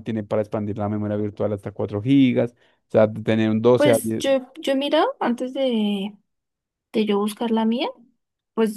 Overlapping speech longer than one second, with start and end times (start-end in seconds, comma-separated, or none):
none